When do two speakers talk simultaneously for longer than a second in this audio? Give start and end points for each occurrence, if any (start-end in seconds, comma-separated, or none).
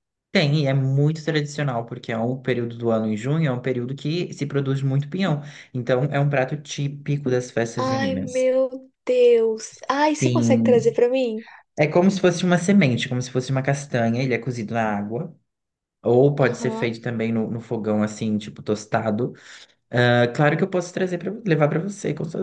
none